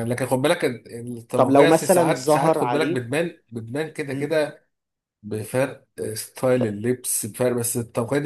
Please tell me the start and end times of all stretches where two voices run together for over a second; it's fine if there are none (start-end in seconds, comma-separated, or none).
1.4-3.0